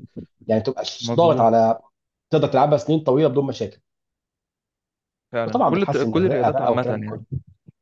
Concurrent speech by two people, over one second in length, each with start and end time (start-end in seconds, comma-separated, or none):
5.5-7.2